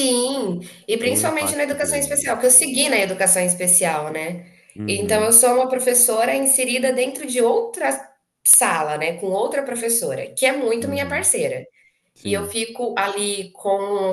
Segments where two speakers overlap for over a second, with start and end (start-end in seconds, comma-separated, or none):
1.0-2.3